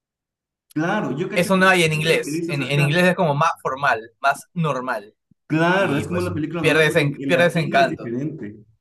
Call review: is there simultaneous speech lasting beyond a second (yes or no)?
yes